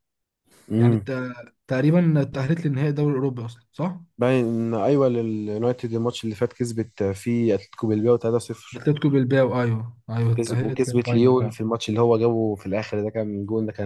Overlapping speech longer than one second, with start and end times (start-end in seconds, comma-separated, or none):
10.4-11.6